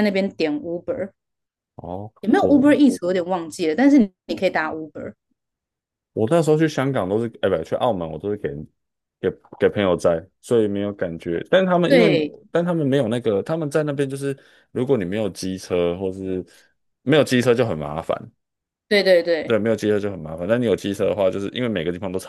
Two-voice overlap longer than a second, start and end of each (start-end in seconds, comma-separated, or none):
none